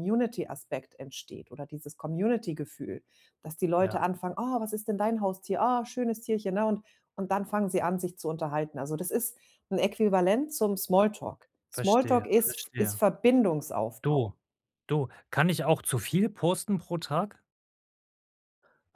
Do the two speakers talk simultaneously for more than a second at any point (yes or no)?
yes